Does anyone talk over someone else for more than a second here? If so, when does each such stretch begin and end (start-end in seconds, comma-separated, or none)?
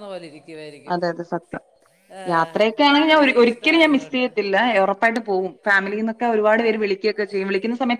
2.9-4.3